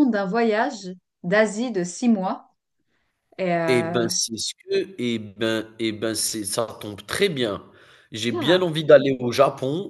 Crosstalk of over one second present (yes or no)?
no